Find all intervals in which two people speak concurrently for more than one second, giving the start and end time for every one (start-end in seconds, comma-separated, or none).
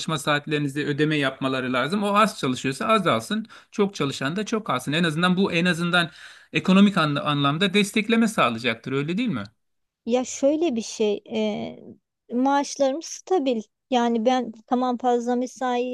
none